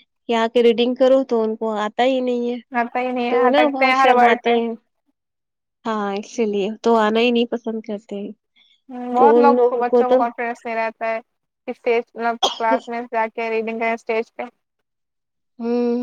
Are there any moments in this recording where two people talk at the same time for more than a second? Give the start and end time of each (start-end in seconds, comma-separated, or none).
3.3-4.5